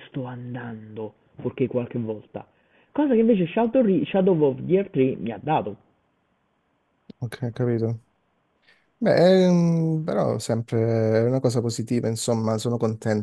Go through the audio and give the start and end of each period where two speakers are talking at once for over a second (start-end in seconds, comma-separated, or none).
none